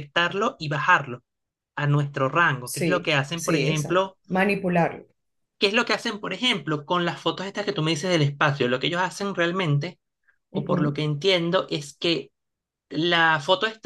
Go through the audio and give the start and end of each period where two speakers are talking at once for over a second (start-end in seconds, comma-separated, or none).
2.6-4.2